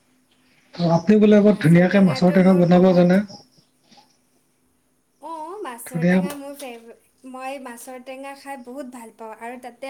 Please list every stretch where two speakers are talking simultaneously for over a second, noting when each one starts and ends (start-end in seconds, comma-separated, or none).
1.3-3.1